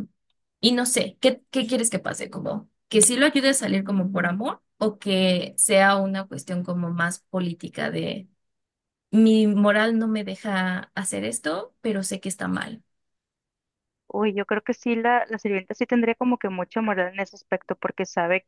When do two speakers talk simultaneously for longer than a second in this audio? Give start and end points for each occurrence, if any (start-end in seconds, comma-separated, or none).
none